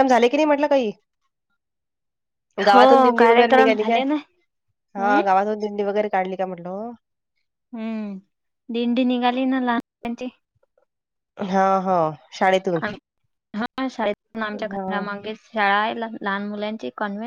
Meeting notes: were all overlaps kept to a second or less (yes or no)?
no